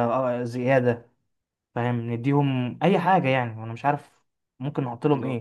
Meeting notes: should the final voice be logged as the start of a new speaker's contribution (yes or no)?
yes